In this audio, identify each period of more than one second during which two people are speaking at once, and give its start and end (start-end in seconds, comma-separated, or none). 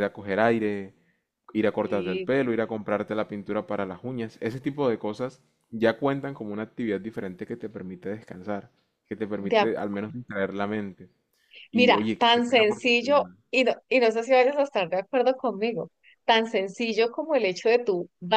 11.7-13.4